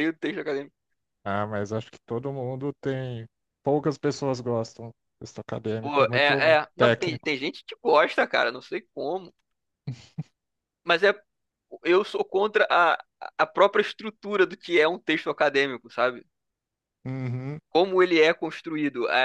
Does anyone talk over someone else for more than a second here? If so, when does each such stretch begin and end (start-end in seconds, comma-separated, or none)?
5.8-7.3